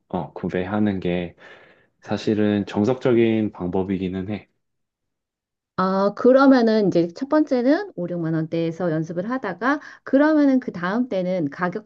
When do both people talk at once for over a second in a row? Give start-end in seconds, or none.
none